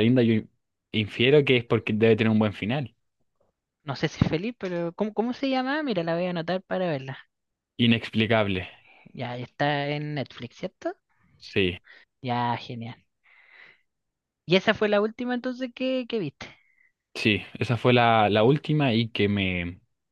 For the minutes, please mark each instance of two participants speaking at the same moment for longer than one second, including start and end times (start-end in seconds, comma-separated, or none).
none